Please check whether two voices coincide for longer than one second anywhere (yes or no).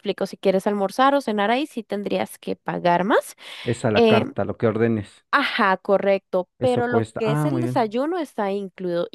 yes